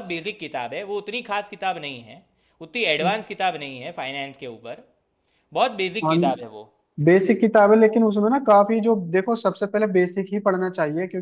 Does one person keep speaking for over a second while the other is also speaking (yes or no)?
no